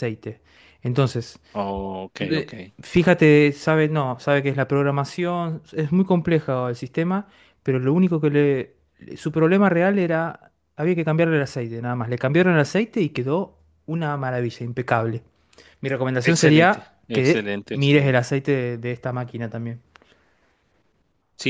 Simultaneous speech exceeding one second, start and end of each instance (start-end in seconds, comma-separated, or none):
16.2-18.2